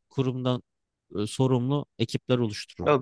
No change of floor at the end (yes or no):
no